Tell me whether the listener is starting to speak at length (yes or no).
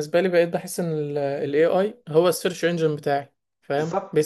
no